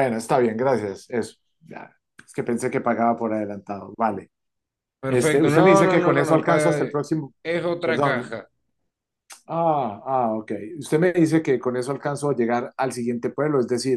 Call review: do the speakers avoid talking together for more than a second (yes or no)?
no